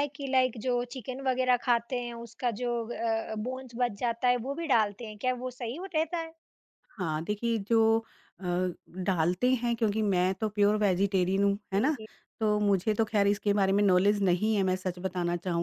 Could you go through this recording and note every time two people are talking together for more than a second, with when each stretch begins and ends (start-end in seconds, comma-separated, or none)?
none